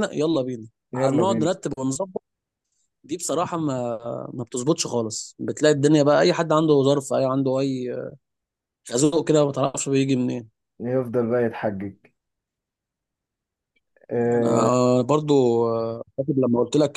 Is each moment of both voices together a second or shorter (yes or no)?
yes